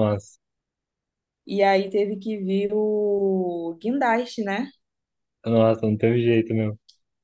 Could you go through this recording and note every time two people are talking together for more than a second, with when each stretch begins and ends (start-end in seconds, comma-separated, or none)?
none